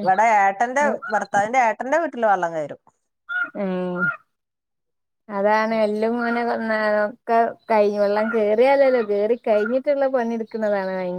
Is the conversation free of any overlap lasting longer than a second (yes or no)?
yes